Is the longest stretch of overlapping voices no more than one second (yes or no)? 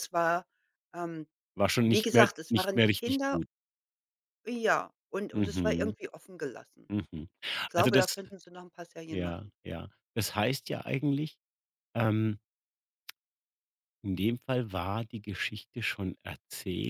no